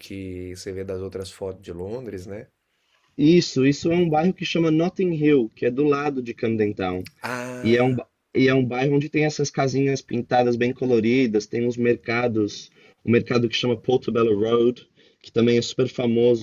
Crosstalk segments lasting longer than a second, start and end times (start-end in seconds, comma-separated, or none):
none